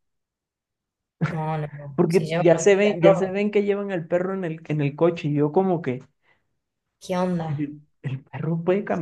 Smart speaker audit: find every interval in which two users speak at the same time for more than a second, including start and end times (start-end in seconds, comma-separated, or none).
1.9-3.4